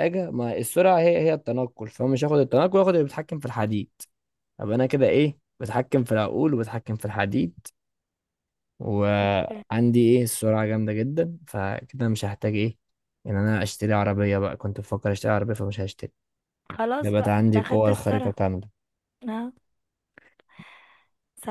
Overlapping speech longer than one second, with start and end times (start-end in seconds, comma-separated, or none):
17.0-18.3